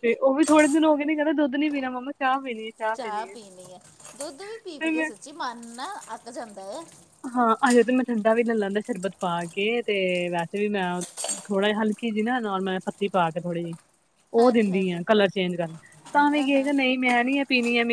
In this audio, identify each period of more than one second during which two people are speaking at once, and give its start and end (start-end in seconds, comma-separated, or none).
none